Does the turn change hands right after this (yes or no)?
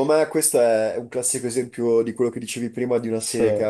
no